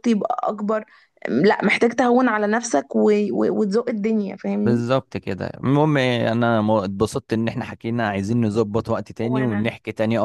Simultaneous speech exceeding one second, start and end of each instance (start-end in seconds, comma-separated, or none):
none